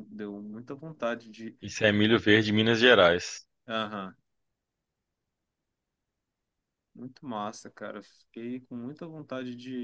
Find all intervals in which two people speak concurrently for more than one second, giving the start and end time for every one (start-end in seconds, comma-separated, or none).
none